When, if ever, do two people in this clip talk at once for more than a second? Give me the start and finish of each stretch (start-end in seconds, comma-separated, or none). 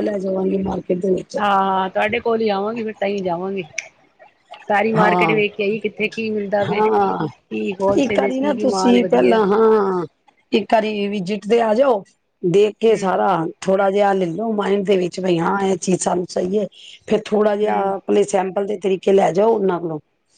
8.0-9.4